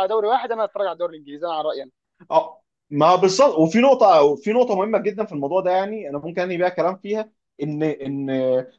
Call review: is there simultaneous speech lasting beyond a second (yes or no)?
no